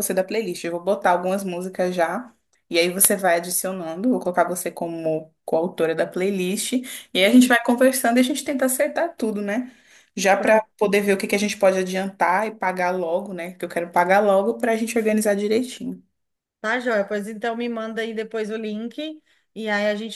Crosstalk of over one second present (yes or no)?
no